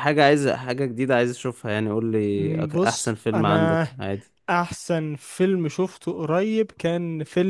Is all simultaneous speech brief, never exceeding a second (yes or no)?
no